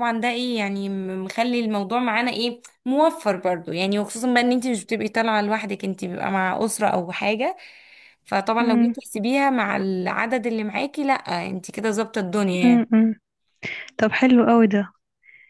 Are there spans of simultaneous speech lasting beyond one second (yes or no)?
no